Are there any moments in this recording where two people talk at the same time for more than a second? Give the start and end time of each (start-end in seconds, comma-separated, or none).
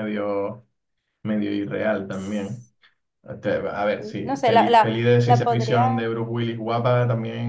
4.3-6.0